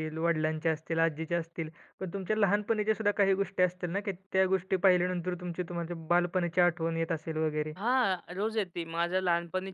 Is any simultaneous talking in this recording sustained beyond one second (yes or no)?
no